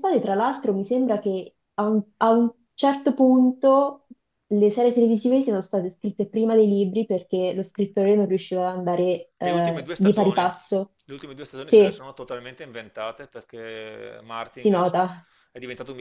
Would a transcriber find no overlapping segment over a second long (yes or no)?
no